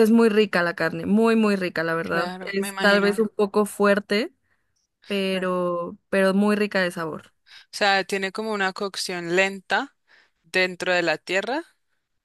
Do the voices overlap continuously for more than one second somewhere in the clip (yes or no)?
yes